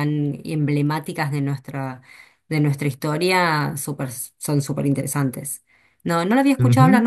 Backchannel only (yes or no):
yes